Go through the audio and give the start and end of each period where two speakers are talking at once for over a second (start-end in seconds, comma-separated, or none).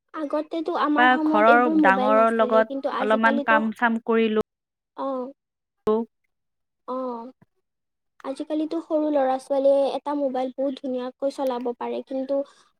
0.9-3.6